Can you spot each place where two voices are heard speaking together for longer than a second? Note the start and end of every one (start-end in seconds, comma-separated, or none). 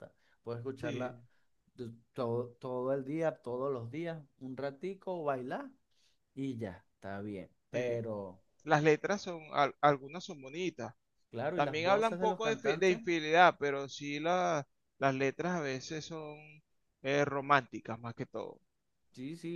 11.5-13.0